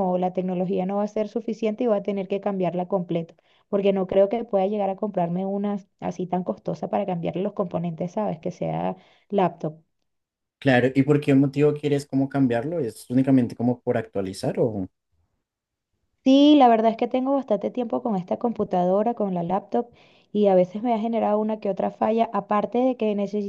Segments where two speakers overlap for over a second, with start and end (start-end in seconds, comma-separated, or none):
none